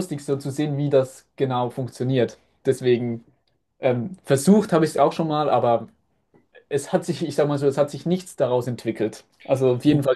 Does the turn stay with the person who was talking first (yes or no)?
yes